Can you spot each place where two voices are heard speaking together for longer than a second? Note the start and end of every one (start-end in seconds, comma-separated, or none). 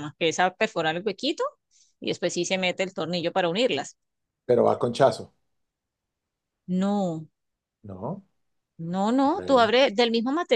none